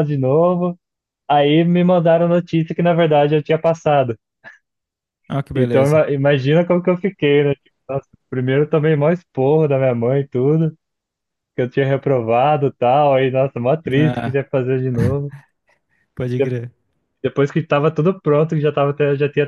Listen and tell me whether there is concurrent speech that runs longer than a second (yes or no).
no